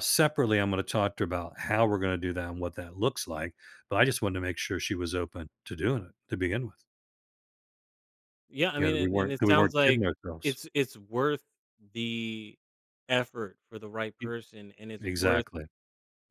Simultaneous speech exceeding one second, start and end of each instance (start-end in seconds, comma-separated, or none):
8.8-10.6